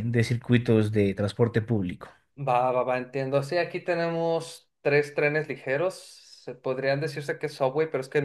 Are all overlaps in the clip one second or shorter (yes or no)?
yes